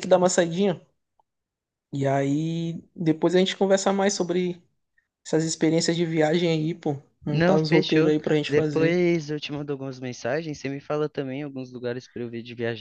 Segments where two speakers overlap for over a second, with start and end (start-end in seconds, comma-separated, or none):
7.3-9.0